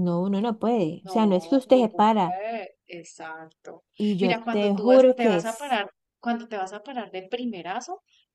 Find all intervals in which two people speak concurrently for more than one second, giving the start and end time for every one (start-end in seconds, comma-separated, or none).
1.1-2.4, 4.2-5.8